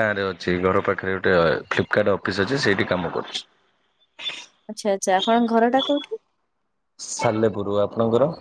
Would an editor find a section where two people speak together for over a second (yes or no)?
no